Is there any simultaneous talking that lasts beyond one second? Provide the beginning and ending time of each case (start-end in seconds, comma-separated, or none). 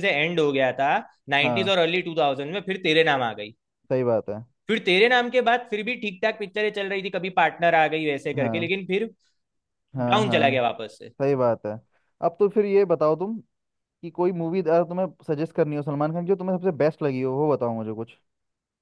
none